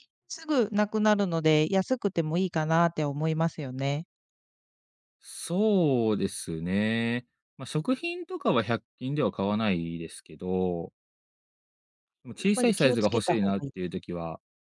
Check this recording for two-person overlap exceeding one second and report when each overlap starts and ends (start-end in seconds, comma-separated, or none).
12.4-13.9